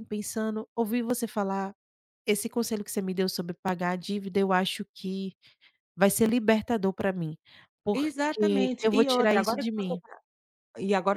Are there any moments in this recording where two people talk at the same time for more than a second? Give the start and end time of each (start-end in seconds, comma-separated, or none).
7.9-10.0